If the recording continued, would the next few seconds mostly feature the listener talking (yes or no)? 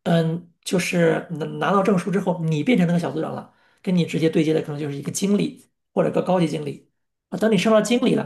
no